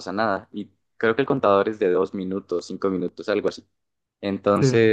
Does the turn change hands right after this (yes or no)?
no